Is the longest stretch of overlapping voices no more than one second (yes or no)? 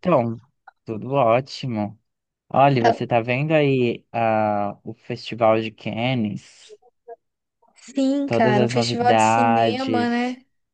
no